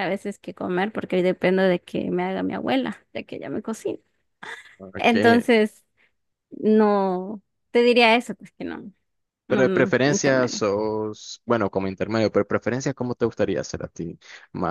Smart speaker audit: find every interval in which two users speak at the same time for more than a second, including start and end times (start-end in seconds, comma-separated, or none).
9.5-10.7